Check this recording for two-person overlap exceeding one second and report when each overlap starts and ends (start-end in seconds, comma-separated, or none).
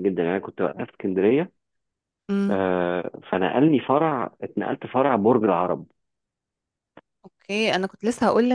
none